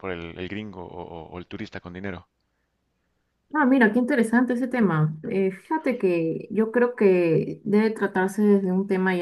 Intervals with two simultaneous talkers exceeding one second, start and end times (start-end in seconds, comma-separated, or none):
none